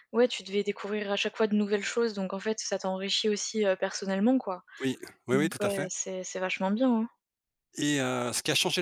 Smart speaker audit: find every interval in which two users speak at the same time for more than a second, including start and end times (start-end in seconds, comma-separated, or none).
none